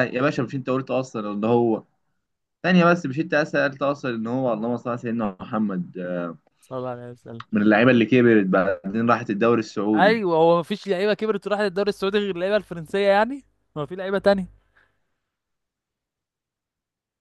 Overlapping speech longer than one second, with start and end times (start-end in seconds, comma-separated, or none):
none